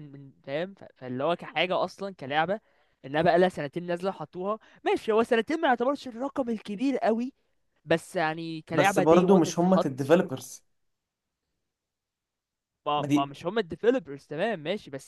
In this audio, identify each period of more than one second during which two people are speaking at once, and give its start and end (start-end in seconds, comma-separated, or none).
8.7-10.2